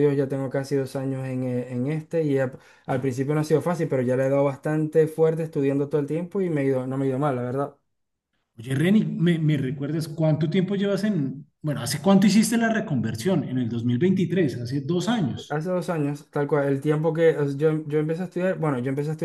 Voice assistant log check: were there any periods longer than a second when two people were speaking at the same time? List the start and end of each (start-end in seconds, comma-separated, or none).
none